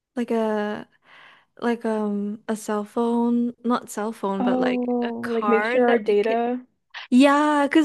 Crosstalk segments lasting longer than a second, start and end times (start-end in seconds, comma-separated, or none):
4.3-6.4